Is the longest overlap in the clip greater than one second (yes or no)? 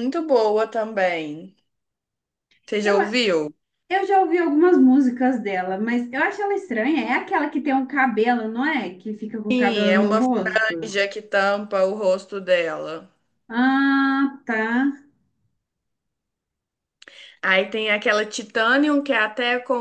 yes